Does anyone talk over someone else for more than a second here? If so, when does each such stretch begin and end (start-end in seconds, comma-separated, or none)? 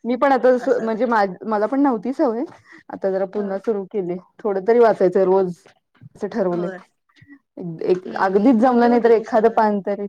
8.3-9.5